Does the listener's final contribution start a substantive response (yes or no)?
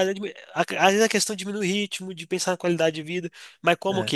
no